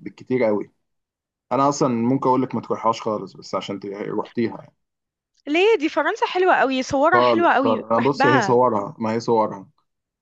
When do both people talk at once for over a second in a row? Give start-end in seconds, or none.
7.1-8.6